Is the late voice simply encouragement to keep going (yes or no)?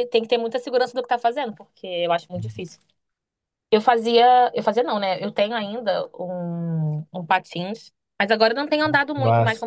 yes